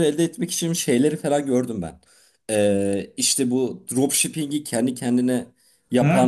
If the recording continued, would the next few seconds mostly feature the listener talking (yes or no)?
yes